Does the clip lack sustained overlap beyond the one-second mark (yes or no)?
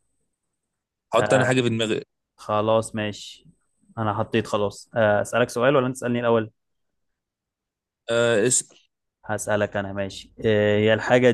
yes